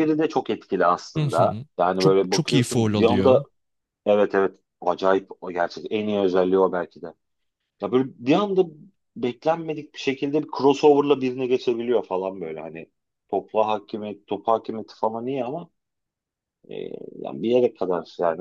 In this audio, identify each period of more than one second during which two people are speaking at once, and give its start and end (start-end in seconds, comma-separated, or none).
1.2-3.4